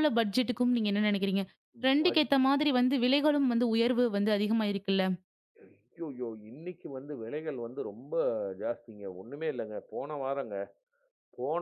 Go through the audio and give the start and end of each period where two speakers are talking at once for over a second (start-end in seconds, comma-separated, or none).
none